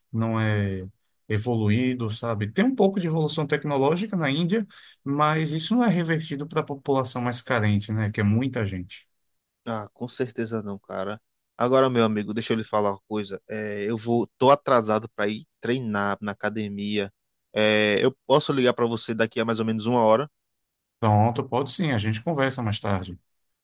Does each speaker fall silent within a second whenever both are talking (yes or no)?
yes